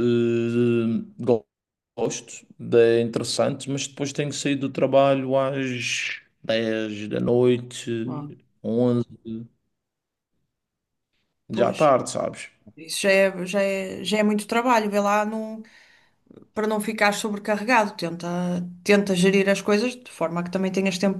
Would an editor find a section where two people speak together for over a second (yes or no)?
no